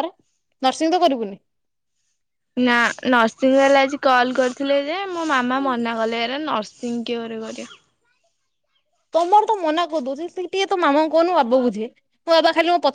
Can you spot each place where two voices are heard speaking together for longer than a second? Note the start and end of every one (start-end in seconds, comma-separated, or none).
none